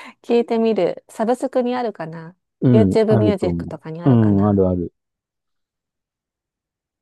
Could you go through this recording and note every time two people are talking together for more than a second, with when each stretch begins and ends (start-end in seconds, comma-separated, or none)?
2.7-4.6